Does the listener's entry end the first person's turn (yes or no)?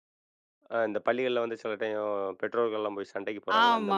yes